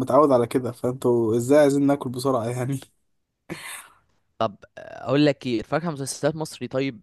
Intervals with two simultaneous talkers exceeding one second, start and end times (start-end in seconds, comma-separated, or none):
none